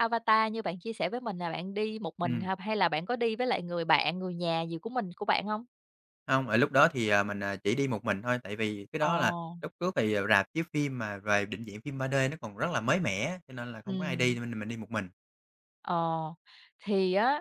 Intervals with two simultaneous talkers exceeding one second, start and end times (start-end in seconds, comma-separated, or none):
none